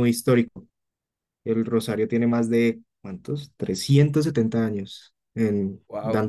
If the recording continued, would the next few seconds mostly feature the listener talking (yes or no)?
no